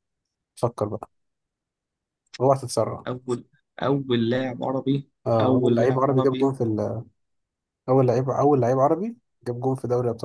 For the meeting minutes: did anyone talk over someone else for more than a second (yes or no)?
yes